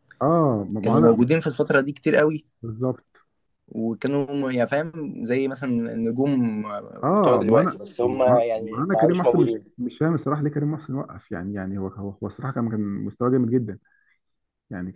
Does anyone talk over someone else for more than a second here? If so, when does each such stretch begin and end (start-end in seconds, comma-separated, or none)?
7.1-9.6